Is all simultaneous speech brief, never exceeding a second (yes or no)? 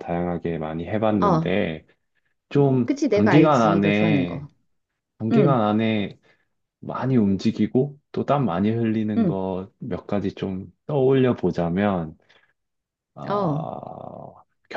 no